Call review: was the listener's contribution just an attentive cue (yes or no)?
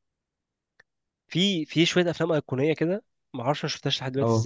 yes